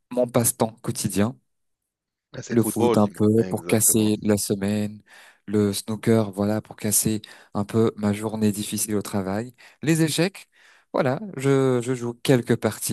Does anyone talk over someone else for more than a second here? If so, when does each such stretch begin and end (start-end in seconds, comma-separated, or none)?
2.5-4.1